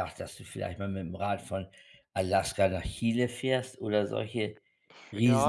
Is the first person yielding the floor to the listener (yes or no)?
yes